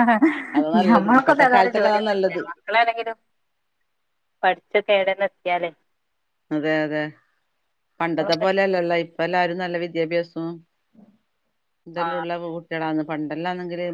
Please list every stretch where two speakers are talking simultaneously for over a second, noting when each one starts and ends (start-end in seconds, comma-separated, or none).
0.8-2.4